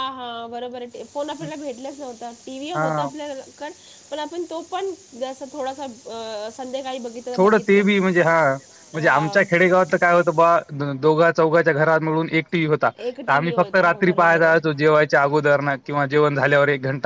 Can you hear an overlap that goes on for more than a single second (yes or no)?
yes